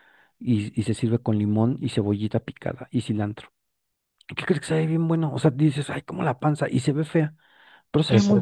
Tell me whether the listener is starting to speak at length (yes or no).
yes